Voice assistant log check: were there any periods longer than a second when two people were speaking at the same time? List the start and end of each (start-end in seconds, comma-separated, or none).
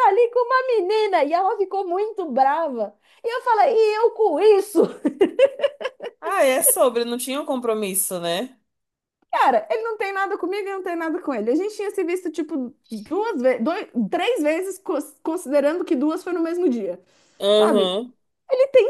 none